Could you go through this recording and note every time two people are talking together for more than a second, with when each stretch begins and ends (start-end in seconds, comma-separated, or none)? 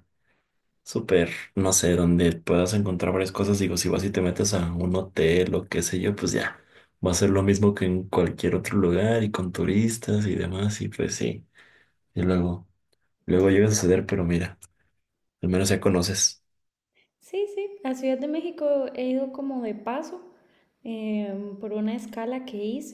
none